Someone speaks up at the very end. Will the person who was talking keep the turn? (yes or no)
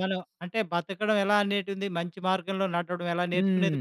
no